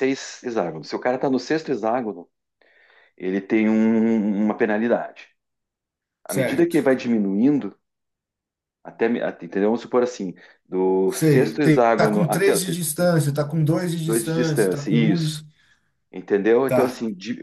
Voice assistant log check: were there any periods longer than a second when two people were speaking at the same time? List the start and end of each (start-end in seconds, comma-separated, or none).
11.1-12.8, 14.0-15.4